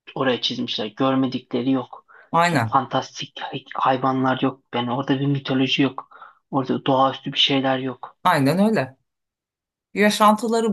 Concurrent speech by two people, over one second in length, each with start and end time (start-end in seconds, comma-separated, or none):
none